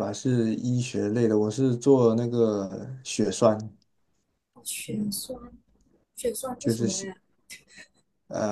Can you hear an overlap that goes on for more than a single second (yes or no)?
no